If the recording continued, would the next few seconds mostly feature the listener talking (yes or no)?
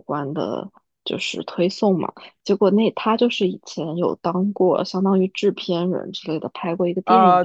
yes